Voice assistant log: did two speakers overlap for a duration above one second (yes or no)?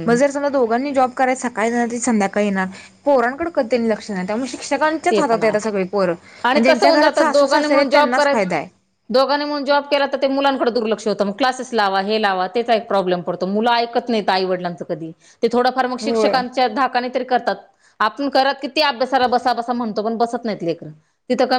yes